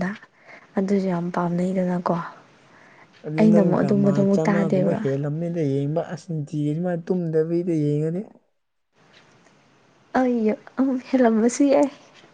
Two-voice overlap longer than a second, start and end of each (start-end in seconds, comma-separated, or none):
3.4-5.0